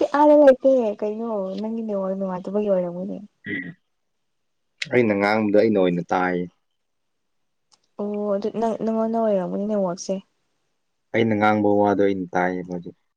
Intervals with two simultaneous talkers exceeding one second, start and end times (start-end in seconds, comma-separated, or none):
none